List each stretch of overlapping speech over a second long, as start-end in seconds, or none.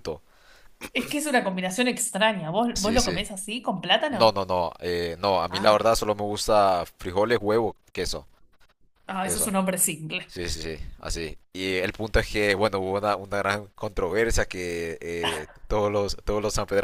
none